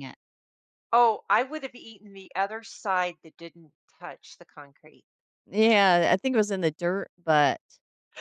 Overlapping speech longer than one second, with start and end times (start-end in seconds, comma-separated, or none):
none